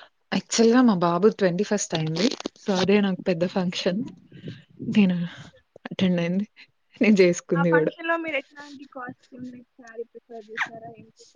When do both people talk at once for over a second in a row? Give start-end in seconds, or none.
none